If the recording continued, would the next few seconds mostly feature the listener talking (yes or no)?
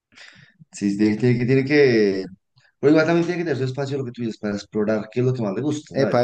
yes